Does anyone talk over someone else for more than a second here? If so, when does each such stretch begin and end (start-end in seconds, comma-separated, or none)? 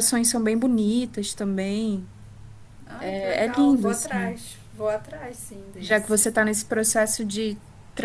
3.0-4.4